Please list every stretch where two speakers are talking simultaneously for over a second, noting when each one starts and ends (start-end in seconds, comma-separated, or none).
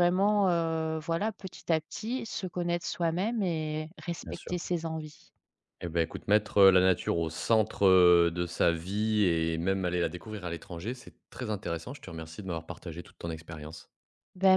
none